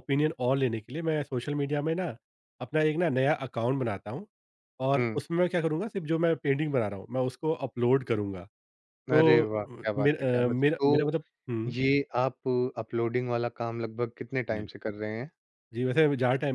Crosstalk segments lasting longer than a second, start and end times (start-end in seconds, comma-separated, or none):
9.1-11.1